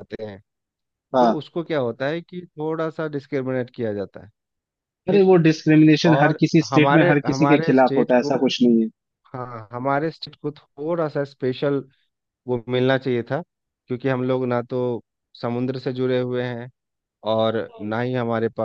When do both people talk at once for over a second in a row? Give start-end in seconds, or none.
6.1-8.4